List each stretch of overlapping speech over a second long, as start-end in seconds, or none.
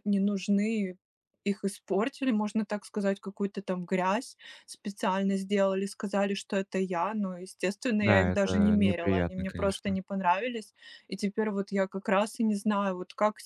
8.0-10.0